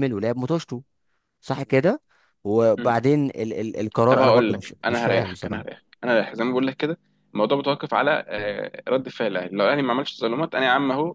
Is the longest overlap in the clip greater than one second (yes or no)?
yes